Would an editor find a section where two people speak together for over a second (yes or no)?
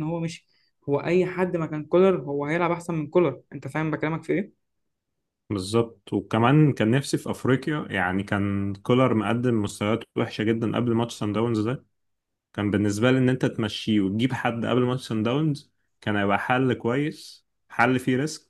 no